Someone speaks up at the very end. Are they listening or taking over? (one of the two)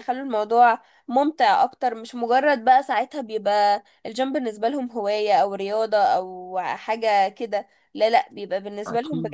listening